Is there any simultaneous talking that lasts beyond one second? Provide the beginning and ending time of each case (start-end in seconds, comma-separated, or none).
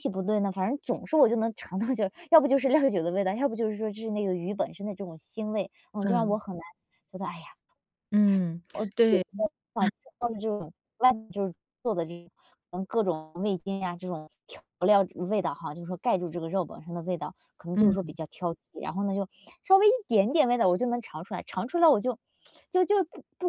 none